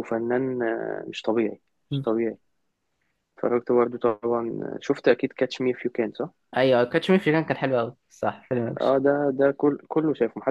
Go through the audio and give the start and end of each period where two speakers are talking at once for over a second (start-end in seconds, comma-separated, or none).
none